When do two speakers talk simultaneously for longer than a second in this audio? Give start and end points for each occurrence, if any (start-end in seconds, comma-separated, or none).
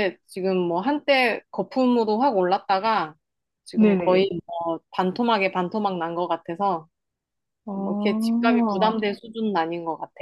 7.7-9.0